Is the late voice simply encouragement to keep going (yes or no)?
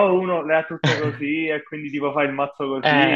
no